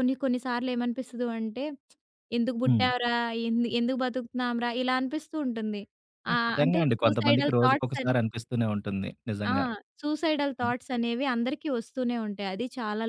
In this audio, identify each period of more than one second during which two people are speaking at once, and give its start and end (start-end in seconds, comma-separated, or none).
6.3-8.1